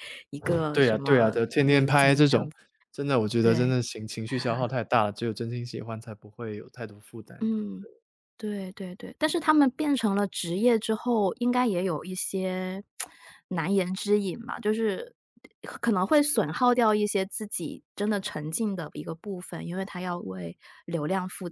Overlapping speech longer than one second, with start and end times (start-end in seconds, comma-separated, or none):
0.7-2.5